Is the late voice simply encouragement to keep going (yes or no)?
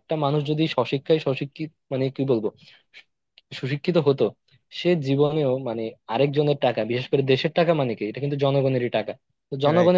yes